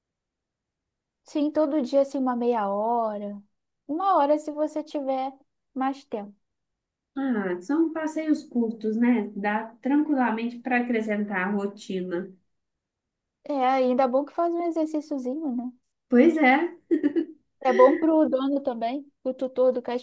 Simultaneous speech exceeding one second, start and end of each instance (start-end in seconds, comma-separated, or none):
none